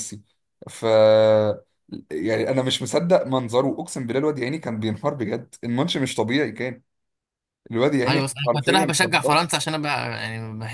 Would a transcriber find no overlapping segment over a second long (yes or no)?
no